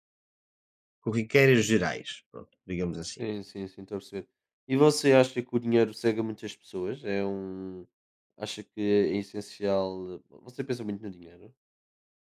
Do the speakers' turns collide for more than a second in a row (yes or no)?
no